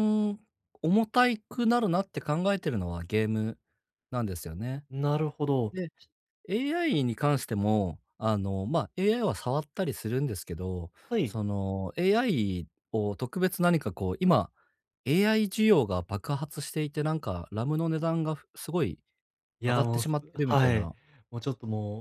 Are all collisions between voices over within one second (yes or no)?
no